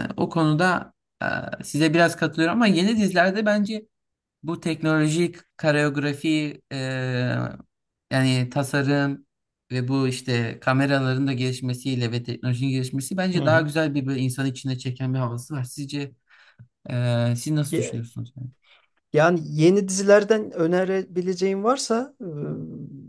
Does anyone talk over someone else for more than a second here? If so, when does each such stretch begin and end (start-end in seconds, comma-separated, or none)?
none